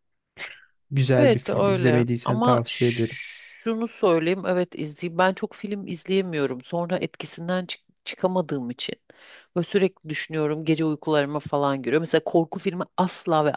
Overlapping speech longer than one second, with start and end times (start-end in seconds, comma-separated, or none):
1.2-3.2